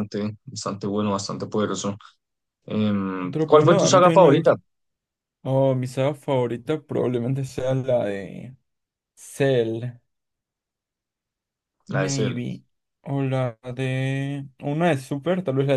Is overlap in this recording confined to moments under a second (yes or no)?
no